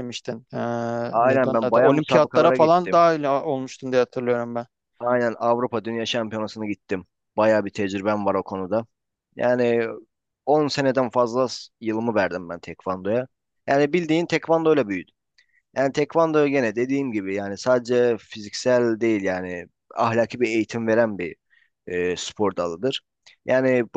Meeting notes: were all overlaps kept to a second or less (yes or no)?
no